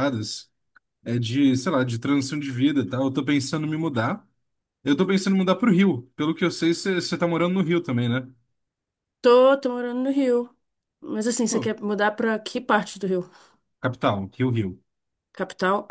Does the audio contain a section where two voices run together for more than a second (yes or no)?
no